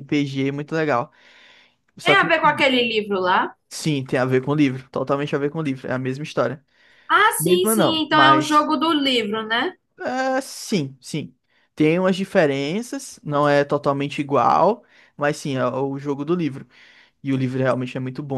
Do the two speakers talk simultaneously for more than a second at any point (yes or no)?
yes